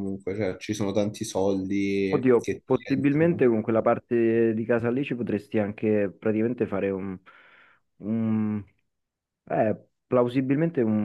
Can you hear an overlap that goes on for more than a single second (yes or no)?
yes